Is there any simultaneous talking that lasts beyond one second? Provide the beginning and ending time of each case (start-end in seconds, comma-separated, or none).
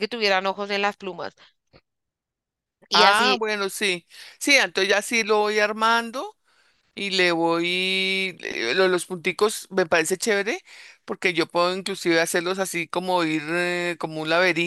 none